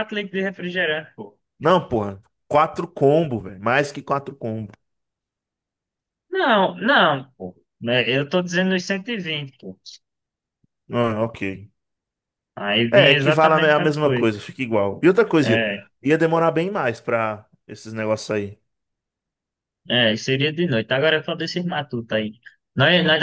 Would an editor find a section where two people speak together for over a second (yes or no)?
yes